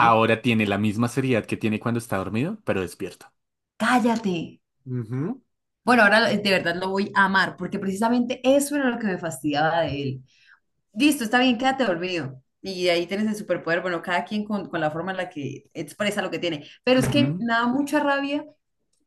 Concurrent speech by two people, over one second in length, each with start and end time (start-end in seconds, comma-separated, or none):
none